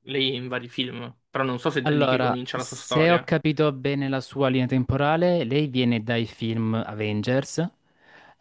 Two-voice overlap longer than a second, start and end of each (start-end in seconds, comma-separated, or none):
1.8-3.3